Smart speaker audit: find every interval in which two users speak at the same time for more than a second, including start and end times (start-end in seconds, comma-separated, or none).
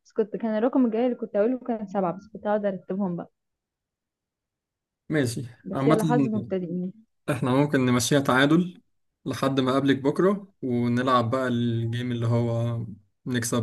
none